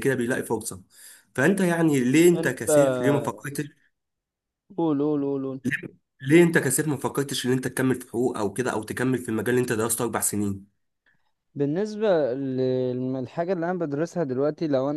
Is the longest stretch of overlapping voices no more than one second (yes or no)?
yes